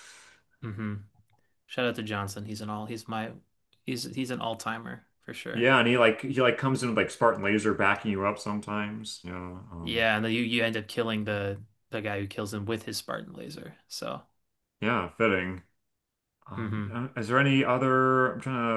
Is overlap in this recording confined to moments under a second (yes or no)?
yes